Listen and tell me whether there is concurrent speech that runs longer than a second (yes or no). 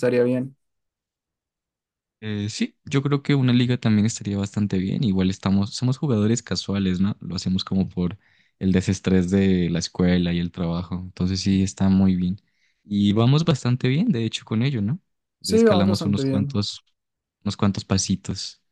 yes